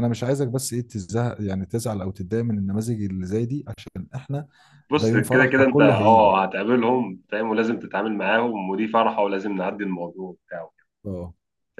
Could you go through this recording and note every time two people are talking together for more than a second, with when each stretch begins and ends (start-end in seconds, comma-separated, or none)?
5.0-6.3